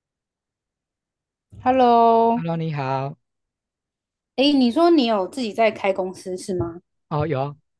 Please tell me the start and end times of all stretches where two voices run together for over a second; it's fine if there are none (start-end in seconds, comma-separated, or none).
none